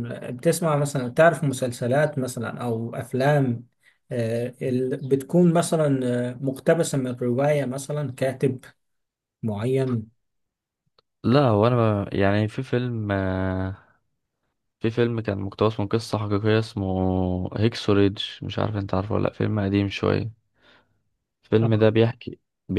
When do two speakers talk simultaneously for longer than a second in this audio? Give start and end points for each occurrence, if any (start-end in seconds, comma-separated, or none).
none